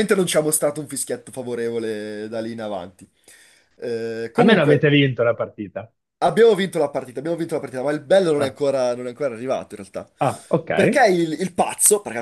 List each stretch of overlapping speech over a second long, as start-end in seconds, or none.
none